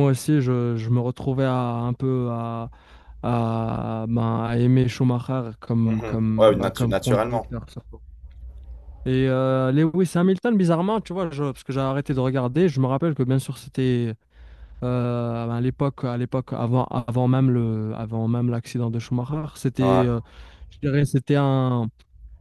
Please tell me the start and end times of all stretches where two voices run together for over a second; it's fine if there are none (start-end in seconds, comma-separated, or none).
5.8-7.5